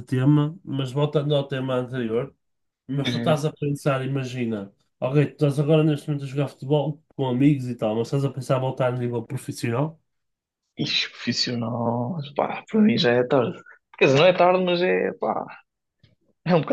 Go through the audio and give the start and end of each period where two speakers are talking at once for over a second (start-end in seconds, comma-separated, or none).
none